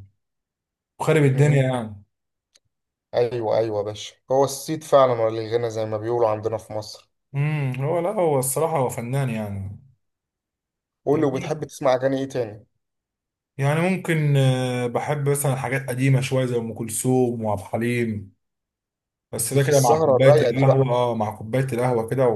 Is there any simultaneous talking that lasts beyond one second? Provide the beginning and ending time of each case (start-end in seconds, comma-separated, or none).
19.4-20.9